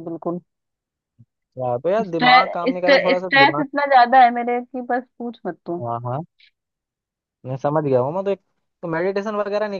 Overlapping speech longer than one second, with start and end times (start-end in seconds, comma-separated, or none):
2.0-3.6